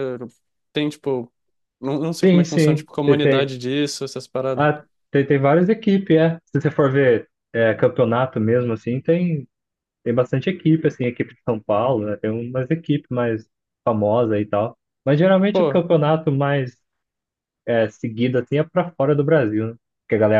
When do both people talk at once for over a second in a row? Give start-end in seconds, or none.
2.2-3.5